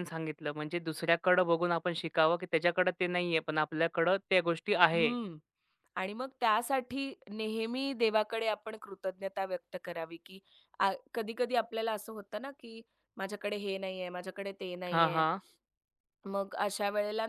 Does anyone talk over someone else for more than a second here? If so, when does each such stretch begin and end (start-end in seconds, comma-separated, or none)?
none